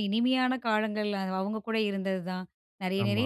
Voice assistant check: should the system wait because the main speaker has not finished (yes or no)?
yes